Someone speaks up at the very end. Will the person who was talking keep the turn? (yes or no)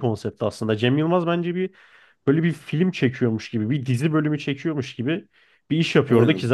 yes